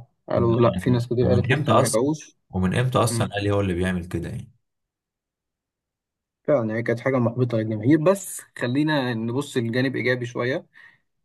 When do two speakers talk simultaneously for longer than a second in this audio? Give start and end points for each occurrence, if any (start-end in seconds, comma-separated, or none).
0.7-2.0